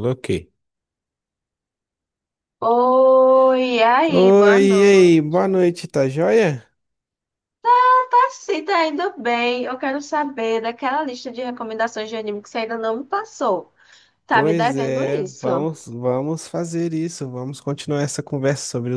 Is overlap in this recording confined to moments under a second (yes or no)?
no